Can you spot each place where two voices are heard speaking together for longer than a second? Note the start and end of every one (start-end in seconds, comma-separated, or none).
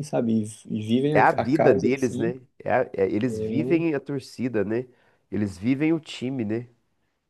1.1-2.3